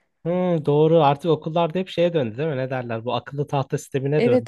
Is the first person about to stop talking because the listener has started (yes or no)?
yes